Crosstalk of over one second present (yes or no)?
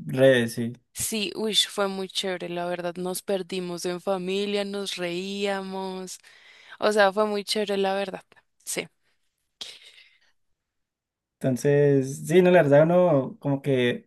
no